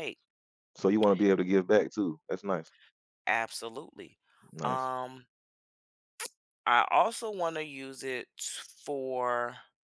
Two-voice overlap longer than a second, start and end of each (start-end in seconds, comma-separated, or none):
none